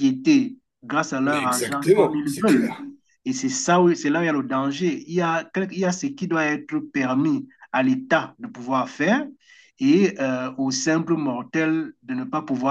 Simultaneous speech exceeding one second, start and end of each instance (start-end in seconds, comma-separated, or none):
1.2-2.8